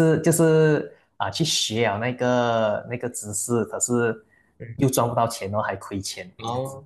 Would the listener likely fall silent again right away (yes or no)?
no